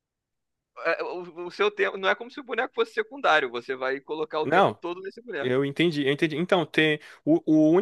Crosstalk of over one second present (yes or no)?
no